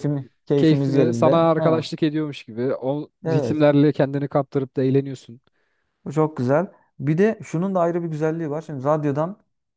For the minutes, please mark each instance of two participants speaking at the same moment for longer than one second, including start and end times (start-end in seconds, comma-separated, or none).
0.6-1.9